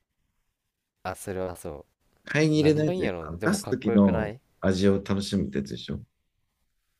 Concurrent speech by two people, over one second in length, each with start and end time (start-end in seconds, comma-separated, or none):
2.5-4.4